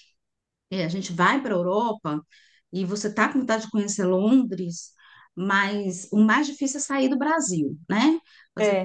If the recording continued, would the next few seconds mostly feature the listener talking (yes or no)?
yes